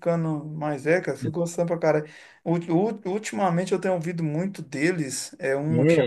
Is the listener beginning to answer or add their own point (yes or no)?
no